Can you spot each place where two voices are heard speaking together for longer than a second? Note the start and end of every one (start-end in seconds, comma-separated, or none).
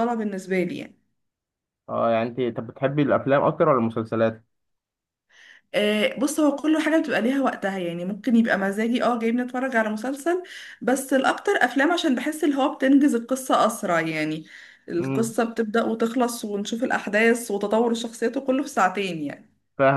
none